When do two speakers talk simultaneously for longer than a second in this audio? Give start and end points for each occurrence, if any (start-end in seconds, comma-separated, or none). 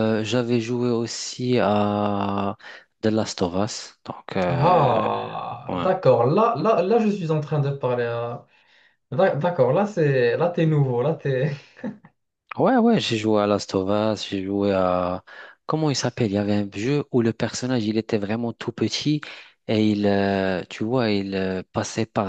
none